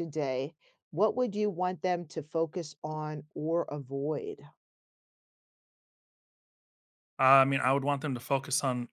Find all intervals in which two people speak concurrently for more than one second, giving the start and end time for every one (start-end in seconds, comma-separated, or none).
none